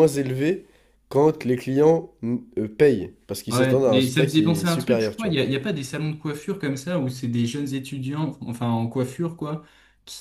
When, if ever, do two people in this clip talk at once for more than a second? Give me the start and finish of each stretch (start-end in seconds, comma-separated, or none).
3.5-5.4